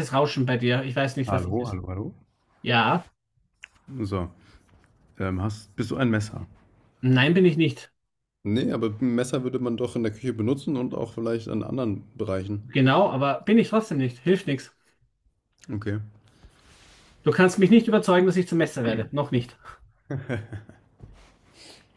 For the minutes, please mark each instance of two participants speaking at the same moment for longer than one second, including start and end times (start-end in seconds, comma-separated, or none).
none